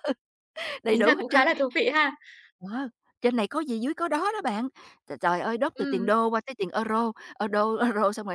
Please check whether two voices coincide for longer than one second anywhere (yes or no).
no